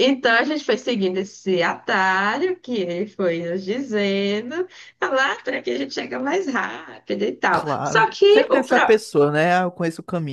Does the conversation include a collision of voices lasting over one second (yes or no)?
yes